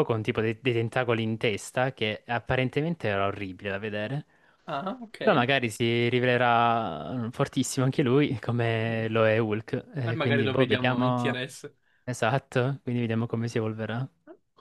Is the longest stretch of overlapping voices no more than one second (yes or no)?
no